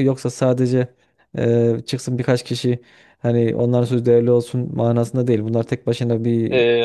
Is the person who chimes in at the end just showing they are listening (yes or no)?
no